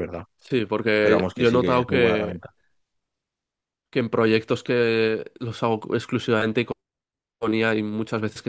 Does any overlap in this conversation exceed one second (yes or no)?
yes